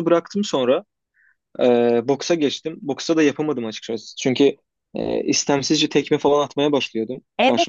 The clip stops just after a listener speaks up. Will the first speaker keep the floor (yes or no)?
no